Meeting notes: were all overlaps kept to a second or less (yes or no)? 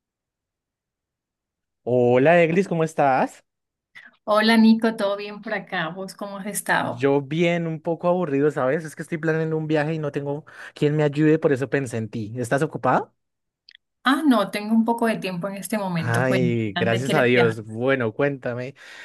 no